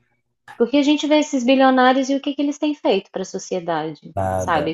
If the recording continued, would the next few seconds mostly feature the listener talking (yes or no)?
no